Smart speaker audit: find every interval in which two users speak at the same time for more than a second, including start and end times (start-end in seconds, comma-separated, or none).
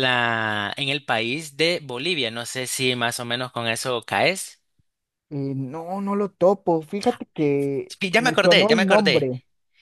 7.9-9.3